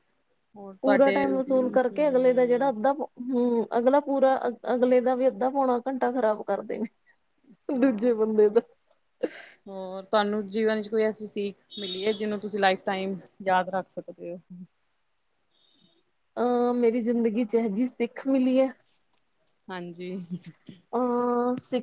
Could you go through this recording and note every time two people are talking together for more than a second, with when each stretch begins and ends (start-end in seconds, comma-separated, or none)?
0.8-2.7